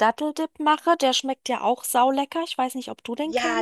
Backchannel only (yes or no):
no